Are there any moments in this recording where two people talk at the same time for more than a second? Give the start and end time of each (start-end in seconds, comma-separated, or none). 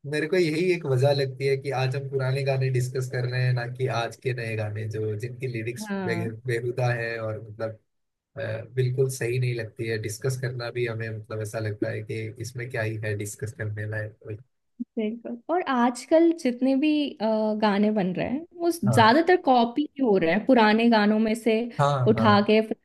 none